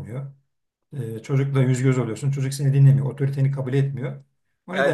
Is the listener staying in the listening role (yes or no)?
no